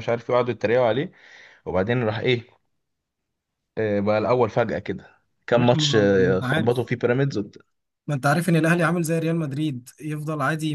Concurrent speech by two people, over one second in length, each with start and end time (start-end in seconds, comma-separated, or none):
5.5-6.8